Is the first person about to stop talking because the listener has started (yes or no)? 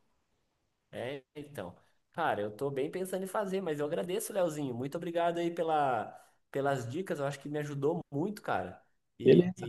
no